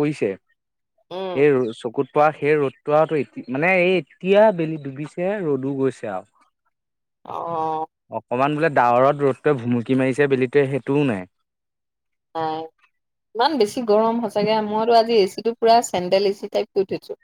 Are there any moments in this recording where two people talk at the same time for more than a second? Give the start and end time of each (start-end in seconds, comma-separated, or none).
none